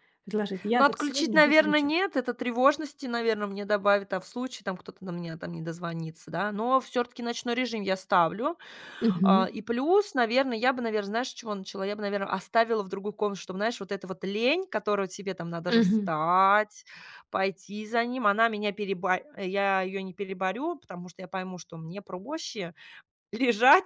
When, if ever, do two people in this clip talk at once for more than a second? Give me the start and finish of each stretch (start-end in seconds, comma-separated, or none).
0.7-1.9